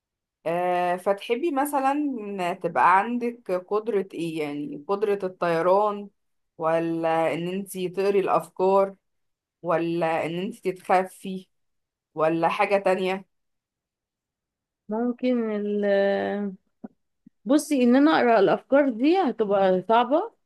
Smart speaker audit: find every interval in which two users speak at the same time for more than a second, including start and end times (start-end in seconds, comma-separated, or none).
none